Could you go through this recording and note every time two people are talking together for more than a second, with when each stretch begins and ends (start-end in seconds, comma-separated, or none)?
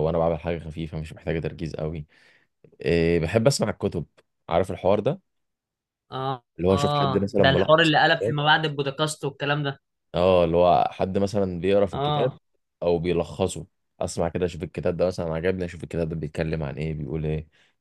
6.6-7.9